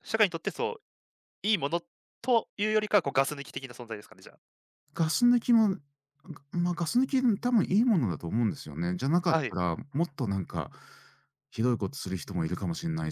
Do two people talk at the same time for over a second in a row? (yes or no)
no